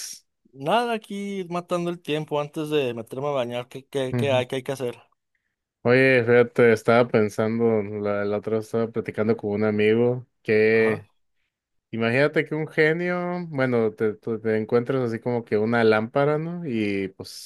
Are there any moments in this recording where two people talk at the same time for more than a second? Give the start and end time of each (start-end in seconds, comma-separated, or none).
none